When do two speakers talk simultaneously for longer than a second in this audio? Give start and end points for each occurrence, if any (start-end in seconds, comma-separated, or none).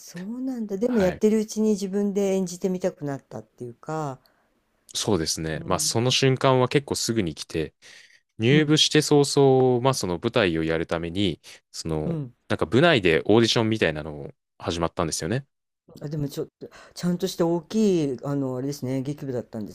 none